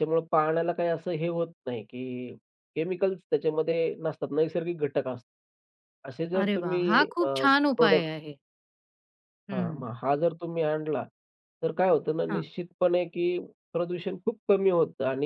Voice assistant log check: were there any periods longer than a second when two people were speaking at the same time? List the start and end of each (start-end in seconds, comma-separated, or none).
6.4-8.1